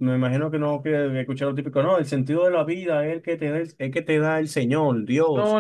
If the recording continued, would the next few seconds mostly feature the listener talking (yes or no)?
yes